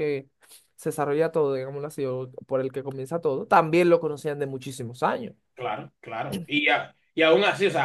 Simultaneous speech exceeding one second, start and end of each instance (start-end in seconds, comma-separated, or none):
none